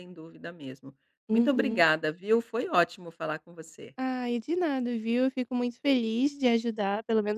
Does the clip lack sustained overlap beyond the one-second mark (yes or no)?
yes